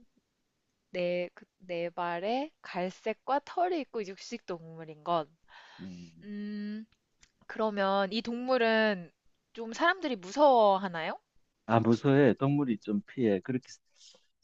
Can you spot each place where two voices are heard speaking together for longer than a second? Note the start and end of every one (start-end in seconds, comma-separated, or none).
none